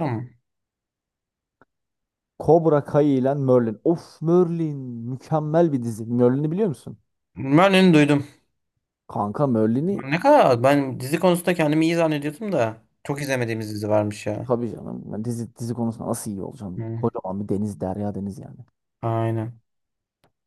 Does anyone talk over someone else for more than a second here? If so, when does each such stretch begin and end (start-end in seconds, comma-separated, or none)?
none